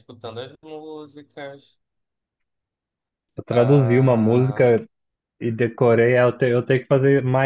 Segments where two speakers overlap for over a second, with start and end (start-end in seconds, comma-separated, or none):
3.5-4.7